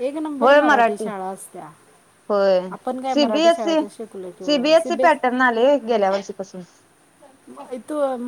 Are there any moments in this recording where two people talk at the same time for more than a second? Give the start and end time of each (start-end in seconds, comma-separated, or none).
none